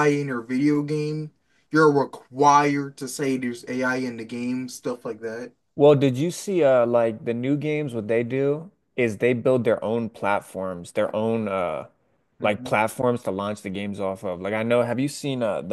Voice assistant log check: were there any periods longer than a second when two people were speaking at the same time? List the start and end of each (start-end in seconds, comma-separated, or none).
none